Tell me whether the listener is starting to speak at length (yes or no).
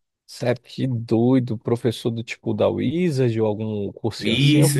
yes